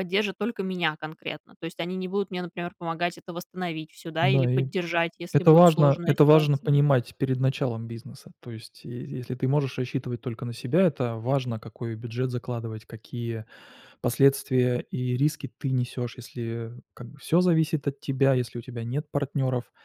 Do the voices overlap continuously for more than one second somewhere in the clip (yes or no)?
yes